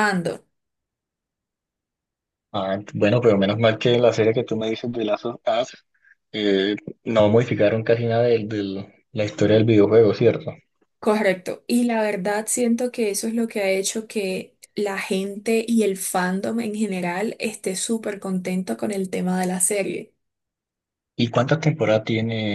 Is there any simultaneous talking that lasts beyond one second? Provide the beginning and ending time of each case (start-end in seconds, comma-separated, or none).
none